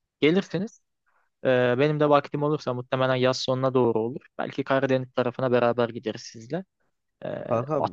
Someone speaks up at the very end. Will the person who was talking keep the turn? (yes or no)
yes